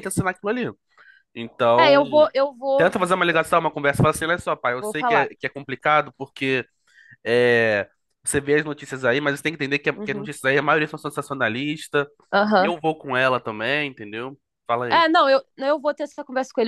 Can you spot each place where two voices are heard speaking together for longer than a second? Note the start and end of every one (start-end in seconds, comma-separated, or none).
none